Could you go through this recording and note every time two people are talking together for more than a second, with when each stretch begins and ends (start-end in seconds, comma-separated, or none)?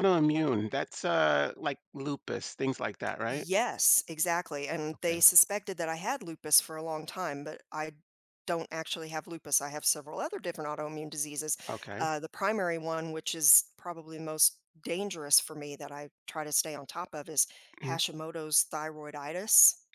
none